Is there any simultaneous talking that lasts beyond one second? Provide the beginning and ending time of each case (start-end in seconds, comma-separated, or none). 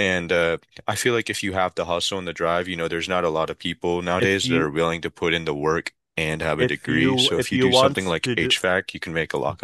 6.6-8.5